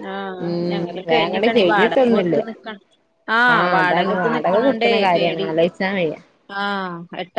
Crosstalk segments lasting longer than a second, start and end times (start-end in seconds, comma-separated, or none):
0.7-2.4